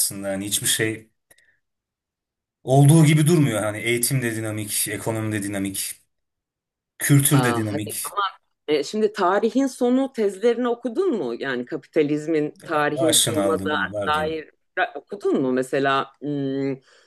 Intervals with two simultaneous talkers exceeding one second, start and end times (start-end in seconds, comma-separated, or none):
13.0-14.4